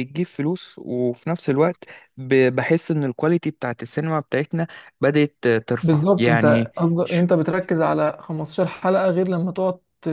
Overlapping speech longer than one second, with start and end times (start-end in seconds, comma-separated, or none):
5.8-7.2